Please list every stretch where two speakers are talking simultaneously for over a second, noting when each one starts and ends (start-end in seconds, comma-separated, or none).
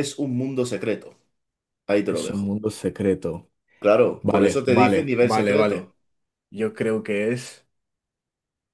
4.2-5.9